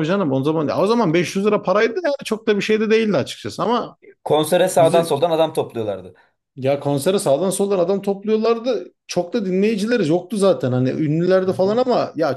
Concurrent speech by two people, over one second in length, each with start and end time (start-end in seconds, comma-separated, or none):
none